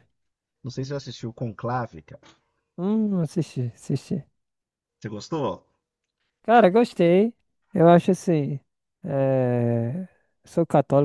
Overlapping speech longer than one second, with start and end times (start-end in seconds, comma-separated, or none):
none